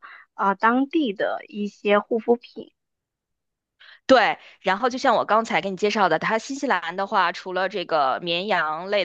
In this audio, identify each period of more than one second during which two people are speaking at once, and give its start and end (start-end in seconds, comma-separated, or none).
none